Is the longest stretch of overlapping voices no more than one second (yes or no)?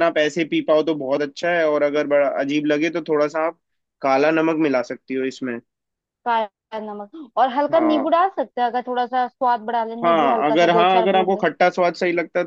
no